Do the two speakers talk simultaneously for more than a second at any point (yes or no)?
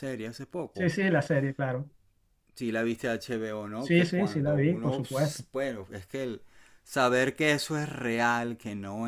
yes